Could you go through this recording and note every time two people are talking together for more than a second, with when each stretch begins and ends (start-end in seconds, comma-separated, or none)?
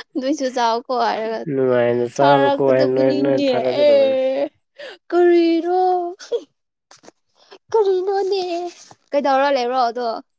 2.2-3.9